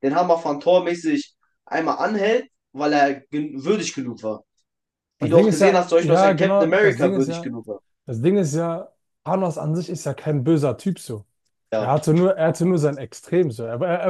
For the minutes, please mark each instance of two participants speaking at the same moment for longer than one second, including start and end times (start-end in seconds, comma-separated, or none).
5.2-7.5